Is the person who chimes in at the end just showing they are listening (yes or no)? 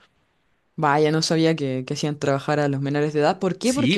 yes